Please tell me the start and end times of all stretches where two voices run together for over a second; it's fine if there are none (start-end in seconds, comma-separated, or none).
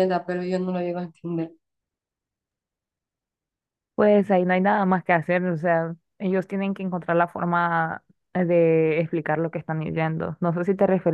none